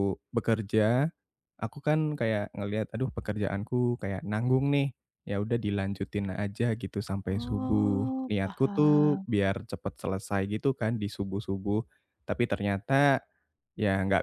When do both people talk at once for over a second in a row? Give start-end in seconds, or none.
7.3-9.2